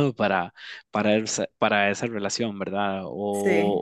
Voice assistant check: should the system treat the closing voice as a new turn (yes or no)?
no